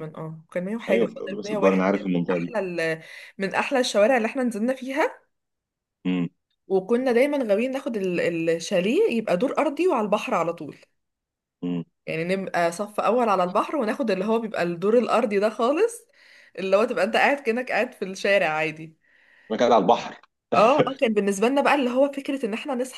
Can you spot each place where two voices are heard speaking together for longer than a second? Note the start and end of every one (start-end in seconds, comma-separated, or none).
0.9-2.6